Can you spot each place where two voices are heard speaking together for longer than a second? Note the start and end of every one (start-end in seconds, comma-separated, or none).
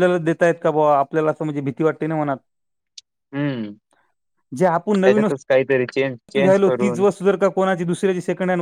5.0-7.0